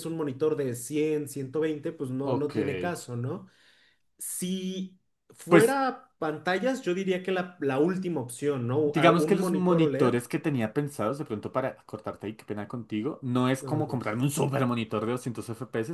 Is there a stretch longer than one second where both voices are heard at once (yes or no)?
yes